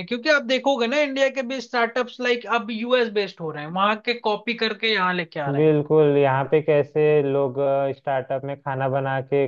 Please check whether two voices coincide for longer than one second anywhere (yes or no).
no